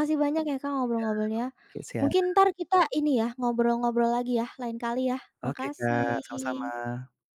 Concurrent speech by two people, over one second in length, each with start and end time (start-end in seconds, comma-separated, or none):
5.4-6.7